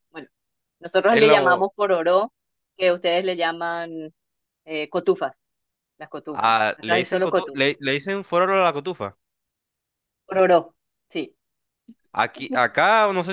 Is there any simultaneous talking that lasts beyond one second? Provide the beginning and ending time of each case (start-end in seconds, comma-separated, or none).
6.3-7.6